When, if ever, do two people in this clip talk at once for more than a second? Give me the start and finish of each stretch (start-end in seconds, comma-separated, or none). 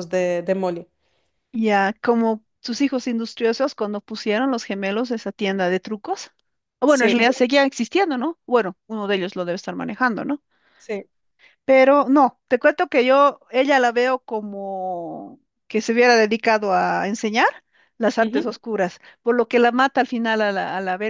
none